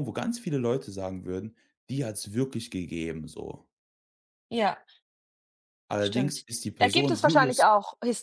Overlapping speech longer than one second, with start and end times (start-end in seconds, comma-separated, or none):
6.0-7.6